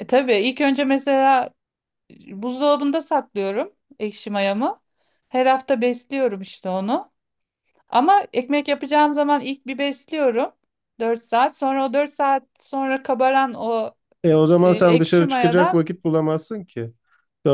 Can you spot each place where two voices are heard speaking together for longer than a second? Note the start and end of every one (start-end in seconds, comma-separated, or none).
14.6-15.8